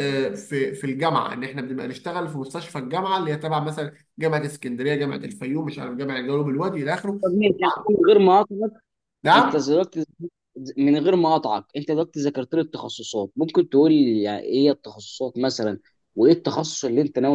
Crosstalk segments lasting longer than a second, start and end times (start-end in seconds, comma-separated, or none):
none